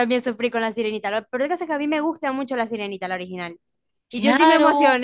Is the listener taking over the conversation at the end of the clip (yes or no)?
no